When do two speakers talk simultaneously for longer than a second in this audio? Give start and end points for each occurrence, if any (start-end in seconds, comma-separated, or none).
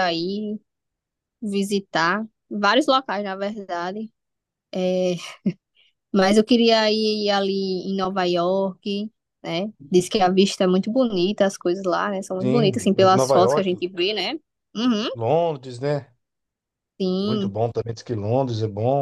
12.4-13.7